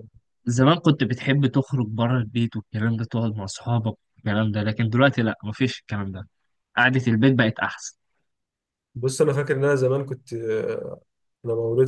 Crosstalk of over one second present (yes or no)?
no